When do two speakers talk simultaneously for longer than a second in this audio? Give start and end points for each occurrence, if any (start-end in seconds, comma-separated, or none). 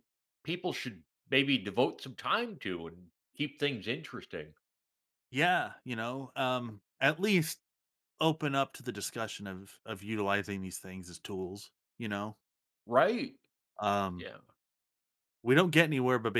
none